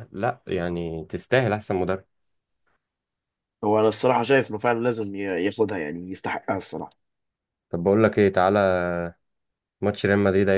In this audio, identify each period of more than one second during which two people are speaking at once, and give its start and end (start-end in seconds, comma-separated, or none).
none